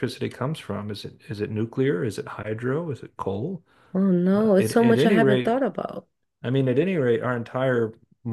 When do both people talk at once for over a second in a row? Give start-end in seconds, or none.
4.3-5.6